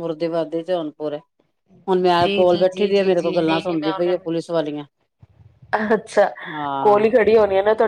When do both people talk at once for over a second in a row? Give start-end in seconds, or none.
2.2-4.1